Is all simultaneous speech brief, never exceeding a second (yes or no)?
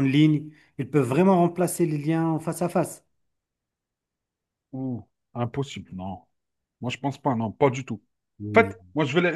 yes